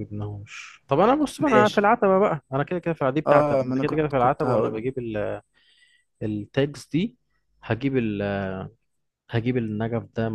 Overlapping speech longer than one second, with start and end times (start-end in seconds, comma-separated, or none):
3.3-4.9